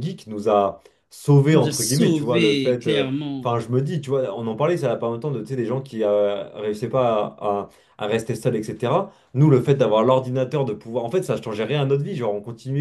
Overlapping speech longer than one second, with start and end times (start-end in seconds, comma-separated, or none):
1.5-3.5